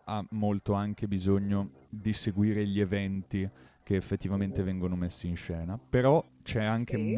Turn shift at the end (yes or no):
no